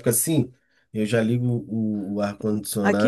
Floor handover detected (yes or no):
yes